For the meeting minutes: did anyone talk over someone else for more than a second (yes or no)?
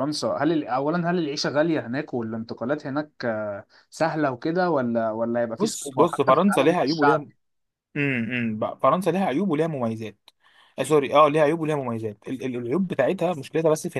yes